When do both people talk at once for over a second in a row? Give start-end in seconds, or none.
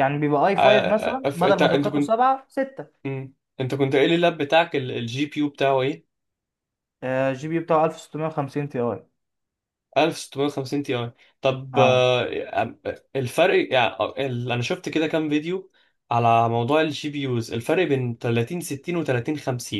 0.6-2.1